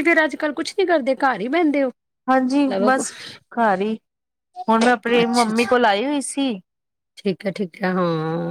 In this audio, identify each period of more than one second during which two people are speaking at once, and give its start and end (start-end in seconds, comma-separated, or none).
none